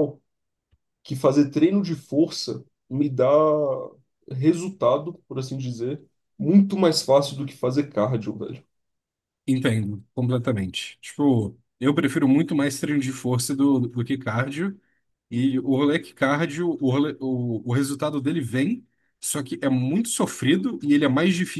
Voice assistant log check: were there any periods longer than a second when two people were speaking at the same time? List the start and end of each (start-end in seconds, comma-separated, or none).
none